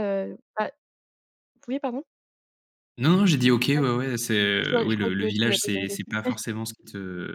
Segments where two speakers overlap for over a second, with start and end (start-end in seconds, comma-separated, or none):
4.6-6.1